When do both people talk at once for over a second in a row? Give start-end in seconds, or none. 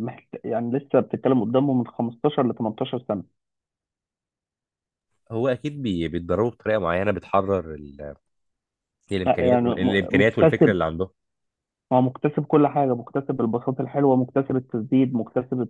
9.2-10.8